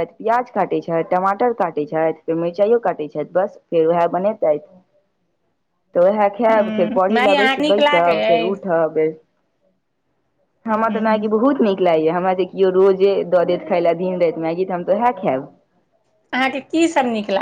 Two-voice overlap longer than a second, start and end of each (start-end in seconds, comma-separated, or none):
6.5-8.6